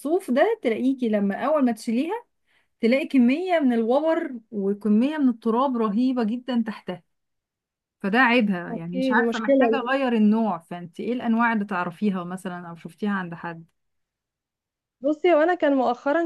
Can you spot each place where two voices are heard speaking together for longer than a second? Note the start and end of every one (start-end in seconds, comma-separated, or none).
8.7-10.0